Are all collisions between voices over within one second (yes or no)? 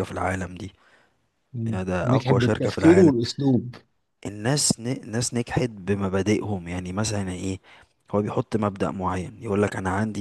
no